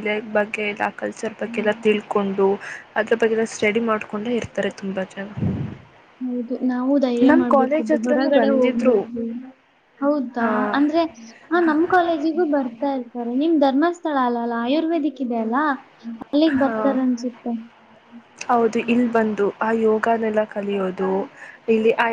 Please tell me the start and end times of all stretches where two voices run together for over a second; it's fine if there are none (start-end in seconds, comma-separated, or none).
7.3-9.0